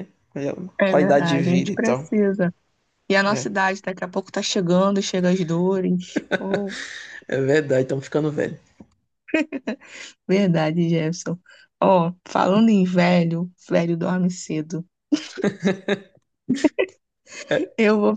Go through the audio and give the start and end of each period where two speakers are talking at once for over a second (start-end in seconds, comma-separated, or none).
0.8-2.1